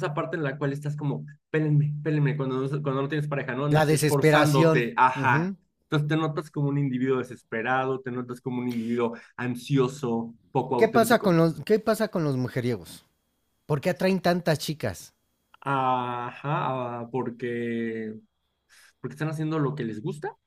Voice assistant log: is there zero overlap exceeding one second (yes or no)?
no